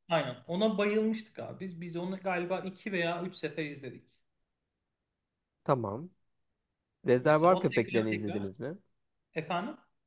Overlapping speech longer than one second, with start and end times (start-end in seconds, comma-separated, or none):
7.2-8.5